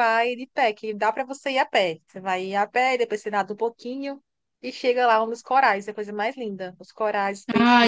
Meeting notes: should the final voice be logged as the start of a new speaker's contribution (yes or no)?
yes